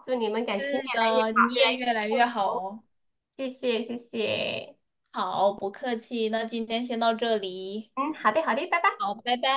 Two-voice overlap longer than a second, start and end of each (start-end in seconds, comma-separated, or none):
0.6-2.6